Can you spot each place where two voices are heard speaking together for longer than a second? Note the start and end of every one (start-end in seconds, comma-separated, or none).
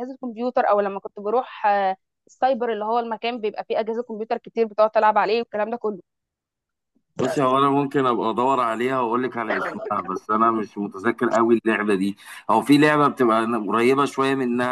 none